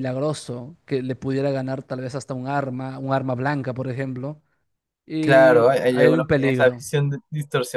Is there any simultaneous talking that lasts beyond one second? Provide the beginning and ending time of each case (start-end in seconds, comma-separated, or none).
5.2-6.8